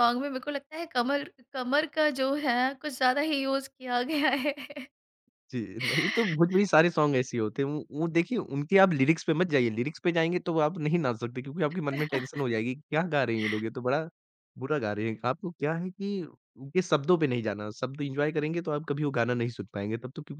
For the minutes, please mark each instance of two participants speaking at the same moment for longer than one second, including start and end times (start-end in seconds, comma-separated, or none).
none